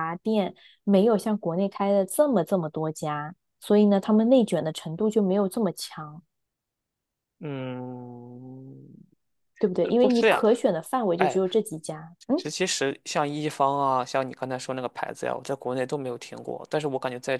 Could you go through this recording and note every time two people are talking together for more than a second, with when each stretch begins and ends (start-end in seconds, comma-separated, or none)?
none